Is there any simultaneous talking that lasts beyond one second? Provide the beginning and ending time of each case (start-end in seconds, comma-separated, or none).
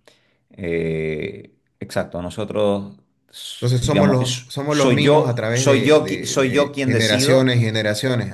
3.5-7.5